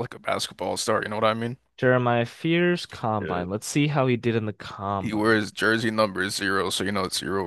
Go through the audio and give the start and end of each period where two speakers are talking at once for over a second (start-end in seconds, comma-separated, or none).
none